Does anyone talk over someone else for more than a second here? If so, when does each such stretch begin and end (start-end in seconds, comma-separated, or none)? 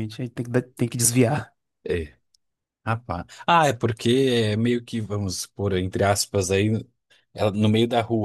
none